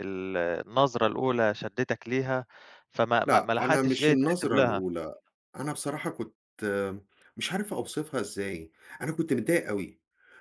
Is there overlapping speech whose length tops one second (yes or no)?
yes